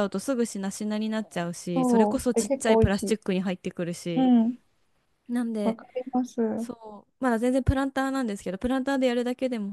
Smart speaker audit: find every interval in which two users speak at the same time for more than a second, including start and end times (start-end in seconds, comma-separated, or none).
1.7-3.2